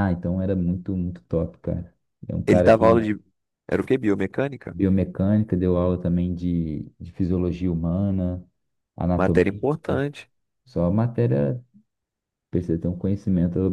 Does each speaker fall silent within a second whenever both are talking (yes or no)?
yes